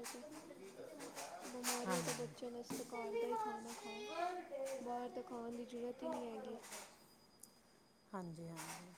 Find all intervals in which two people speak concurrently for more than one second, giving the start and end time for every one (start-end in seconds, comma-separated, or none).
1.9-3.9